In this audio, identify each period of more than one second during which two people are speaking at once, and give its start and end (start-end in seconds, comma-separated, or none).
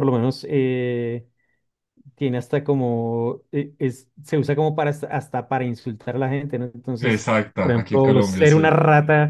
7.0-8.8